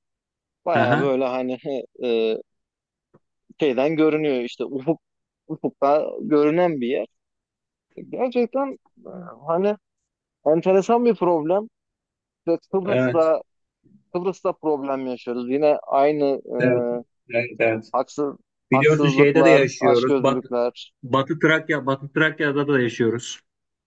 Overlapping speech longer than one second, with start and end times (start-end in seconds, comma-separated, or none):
18.7-20.4